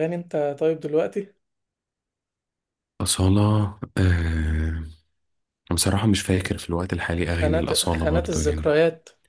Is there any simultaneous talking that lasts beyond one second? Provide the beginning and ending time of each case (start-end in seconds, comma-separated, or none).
7.2-8.8